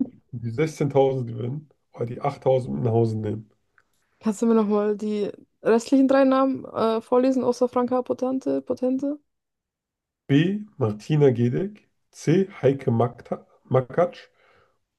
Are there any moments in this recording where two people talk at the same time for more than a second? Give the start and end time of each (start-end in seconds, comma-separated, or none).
none